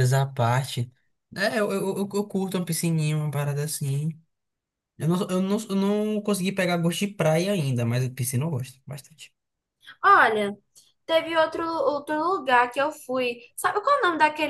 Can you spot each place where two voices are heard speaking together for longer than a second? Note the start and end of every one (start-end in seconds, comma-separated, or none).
none